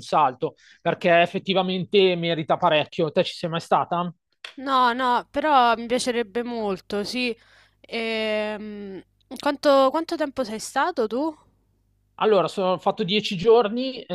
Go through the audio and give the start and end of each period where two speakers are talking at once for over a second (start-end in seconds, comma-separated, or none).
none